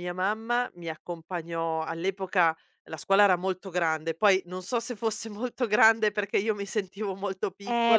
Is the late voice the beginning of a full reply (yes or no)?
yes